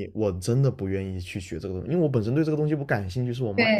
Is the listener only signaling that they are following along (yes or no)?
no